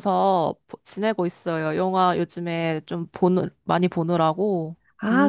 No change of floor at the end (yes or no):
no